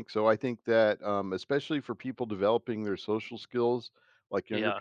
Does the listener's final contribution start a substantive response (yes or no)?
no